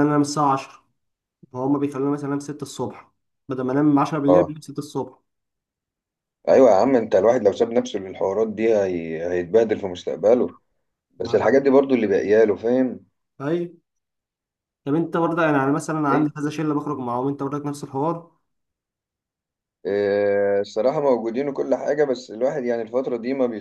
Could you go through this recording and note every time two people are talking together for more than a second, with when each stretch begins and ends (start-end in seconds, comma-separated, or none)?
none